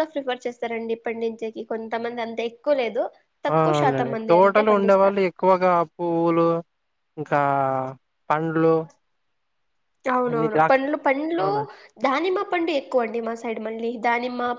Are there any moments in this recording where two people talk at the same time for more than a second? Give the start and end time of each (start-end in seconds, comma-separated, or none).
3.5-5.2